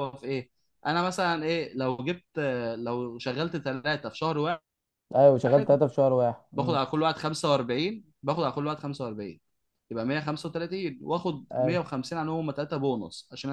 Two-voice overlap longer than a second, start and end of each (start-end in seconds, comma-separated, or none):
none